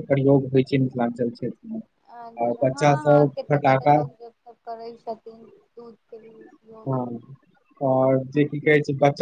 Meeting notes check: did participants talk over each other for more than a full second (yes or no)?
no